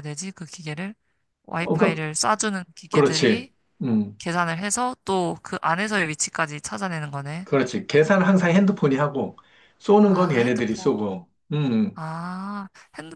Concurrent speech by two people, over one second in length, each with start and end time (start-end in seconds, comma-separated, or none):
10.1-11.2